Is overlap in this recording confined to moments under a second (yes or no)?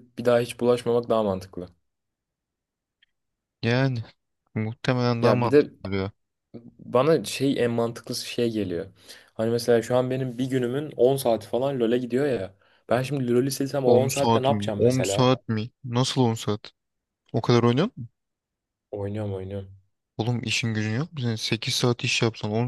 no